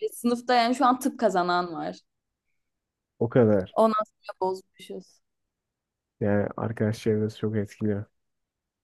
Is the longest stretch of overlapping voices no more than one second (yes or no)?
yes